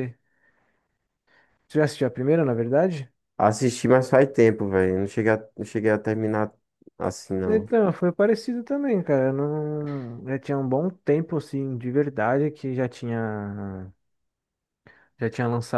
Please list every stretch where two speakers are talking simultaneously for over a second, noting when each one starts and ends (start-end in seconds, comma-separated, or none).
none